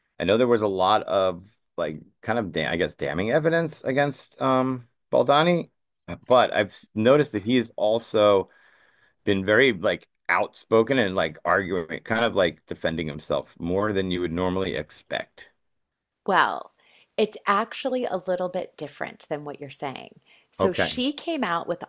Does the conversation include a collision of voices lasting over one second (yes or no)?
no